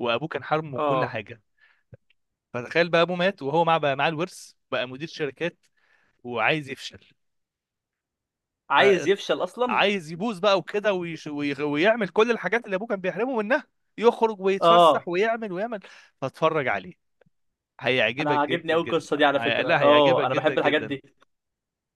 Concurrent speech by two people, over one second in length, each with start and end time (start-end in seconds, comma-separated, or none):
18.2-21.0